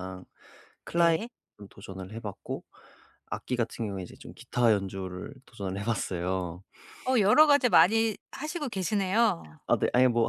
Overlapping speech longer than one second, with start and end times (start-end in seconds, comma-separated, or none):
none